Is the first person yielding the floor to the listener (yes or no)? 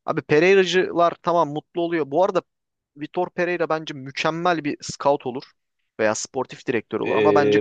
yes